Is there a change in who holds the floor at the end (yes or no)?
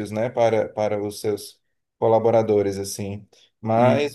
no